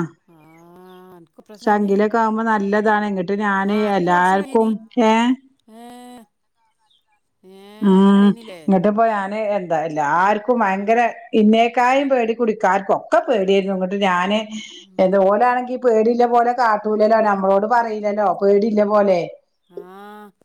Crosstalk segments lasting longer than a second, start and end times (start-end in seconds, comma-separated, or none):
none